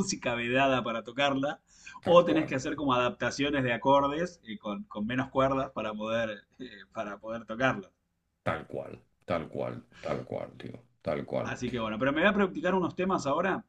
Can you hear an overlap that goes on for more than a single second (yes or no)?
no